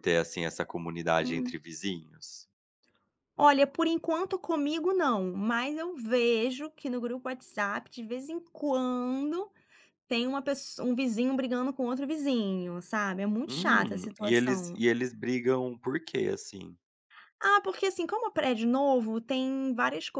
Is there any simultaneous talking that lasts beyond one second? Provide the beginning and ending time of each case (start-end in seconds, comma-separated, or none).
13.5-14.8